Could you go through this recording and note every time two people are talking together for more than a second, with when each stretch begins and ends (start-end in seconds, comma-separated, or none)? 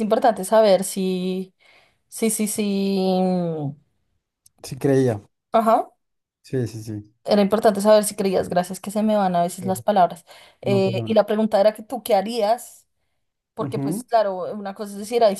none